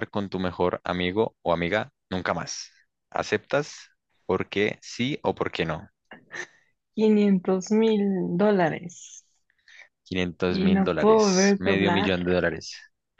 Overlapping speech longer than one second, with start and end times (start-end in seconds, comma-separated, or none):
10.5-12.1